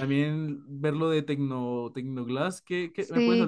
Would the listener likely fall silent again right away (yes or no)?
no